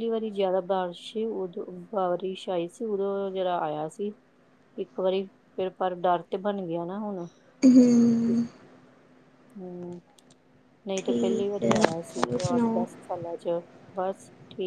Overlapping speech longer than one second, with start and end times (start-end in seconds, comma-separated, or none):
10.9-12.8